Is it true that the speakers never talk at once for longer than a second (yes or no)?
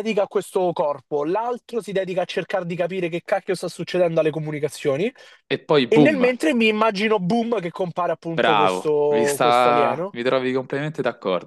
no